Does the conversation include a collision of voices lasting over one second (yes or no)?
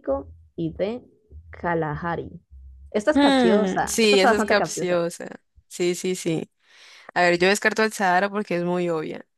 yes